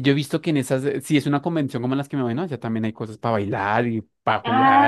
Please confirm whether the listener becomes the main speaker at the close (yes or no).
yes